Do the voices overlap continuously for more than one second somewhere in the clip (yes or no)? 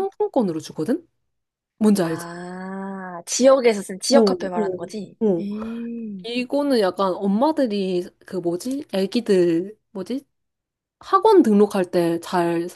yes